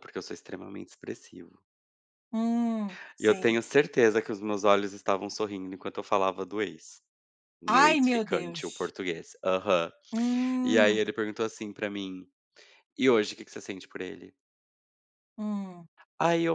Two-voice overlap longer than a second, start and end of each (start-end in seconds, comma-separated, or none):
7.7-8.9